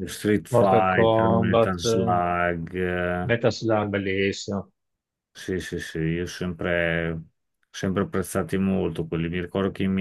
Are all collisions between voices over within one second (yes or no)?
no